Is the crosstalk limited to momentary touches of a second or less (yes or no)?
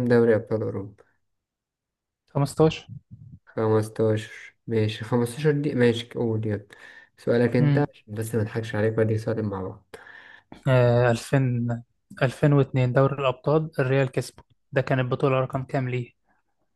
yes